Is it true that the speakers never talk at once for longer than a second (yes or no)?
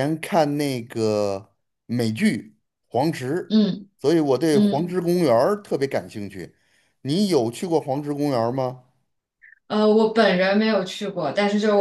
yes